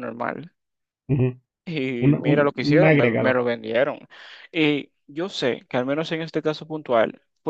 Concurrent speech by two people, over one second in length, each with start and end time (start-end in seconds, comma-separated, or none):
2.0-3.4